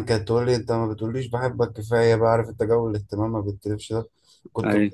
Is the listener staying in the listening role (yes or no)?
yes